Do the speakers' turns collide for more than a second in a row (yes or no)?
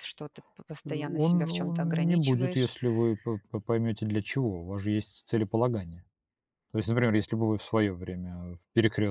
yes